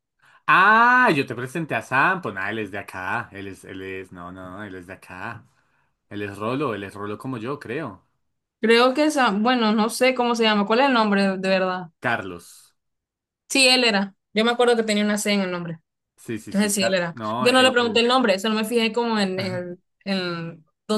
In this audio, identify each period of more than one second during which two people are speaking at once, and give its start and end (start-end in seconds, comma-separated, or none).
16.4-18.1